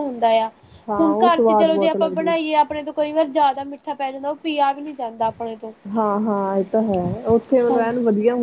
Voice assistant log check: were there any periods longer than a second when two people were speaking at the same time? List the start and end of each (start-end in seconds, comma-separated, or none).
1.0-2.5